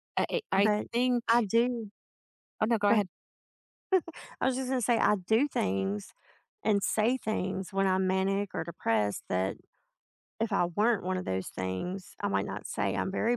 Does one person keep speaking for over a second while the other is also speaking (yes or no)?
no